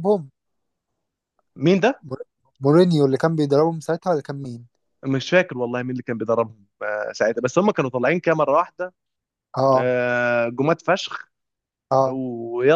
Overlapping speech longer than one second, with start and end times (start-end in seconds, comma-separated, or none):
none